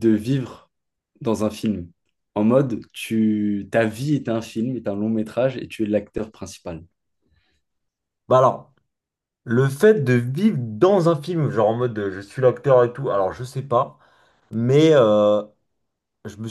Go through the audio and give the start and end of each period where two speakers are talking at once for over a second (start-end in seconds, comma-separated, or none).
none